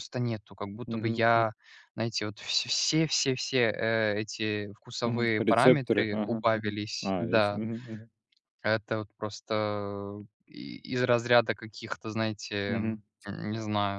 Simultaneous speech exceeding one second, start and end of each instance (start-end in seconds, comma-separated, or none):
5.0-7.6